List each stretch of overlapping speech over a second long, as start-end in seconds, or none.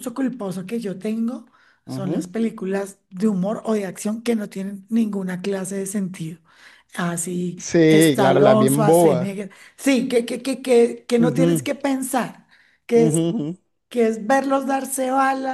7.6-9.3